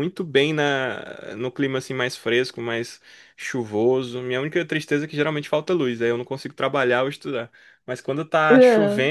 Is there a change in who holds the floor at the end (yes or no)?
no